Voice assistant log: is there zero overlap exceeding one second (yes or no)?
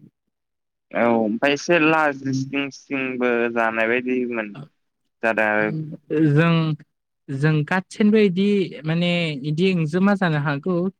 yes